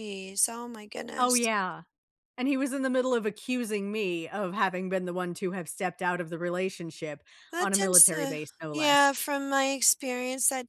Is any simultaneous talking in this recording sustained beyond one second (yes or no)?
yes